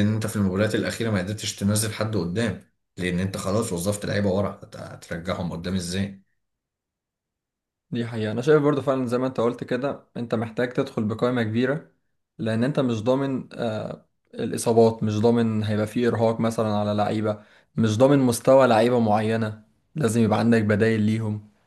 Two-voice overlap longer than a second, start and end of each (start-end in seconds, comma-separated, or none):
none